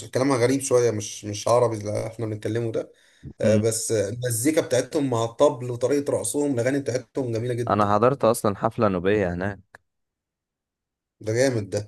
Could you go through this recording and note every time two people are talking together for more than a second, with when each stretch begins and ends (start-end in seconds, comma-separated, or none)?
none